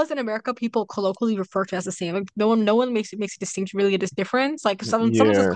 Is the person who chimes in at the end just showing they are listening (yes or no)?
yes